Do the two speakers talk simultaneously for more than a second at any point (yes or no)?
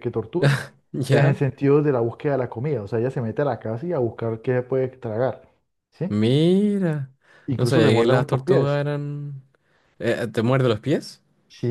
yes